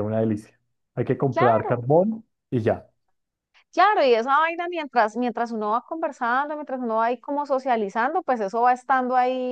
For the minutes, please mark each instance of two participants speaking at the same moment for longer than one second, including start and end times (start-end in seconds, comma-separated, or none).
none